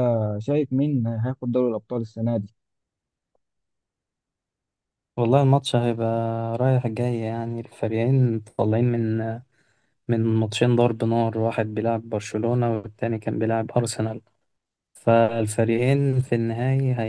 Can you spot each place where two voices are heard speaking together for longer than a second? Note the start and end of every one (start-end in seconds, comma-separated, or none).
none